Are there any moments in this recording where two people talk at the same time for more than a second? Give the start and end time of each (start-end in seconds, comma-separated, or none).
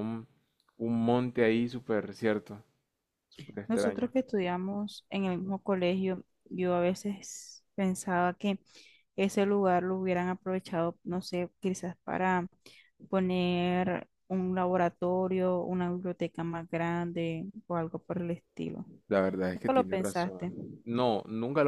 19.5-20.8